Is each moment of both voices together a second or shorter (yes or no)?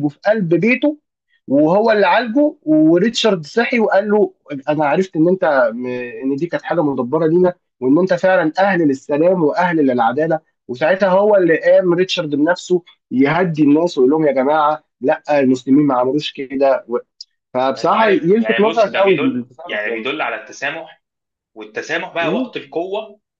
no